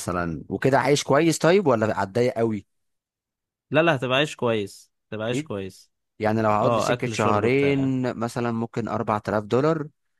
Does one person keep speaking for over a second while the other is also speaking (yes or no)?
yes